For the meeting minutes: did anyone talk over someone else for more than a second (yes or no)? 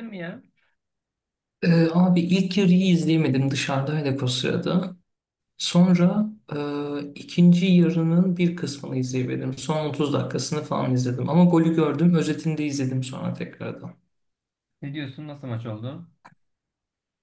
no